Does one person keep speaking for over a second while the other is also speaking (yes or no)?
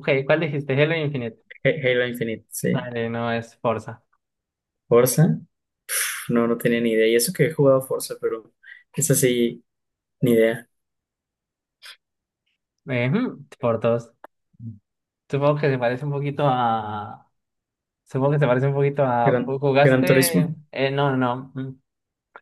yes